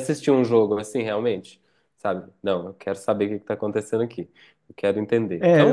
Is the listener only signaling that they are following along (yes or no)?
no